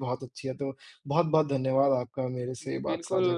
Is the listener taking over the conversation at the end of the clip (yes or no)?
yes